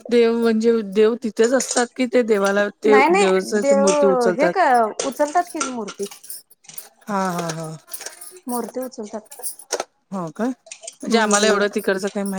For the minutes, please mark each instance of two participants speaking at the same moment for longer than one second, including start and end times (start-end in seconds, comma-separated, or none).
2.9-4.7